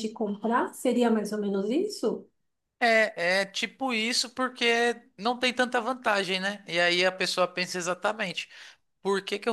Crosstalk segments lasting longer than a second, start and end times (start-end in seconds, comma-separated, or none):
none